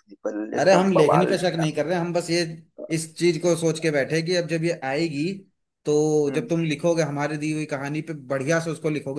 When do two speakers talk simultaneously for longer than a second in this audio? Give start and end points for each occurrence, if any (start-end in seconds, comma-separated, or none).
0.6-1.9